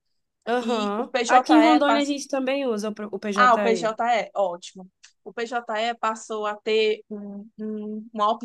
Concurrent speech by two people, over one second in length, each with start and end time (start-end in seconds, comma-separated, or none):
0.6-2.1